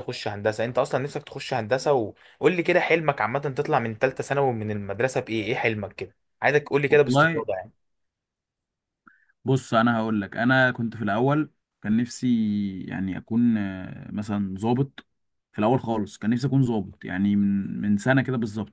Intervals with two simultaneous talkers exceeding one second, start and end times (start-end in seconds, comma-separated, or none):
none